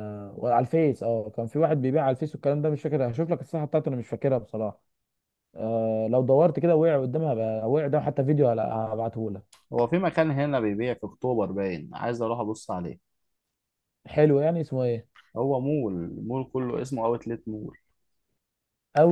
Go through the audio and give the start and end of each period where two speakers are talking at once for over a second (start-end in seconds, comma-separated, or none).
none